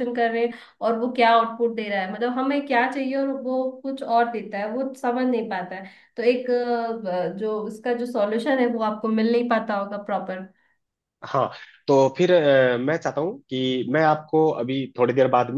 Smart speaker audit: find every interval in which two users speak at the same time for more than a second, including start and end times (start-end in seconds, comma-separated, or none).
none